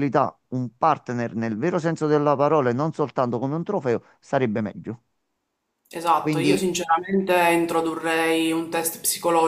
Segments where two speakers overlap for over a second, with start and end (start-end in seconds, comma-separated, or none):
none